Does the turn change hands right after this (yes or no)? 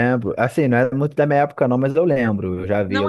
yes